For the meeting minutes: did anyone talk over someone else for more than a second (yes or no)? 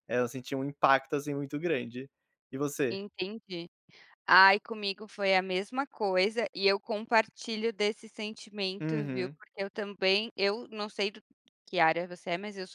no